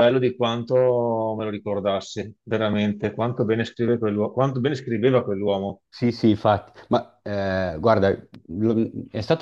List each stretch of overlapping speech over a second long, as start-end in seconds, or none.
none